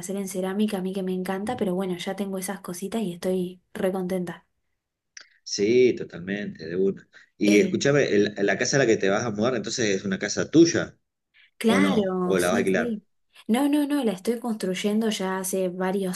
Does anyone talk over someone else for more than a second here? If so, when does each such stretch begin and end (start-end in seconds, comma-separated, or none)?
11.6-13.0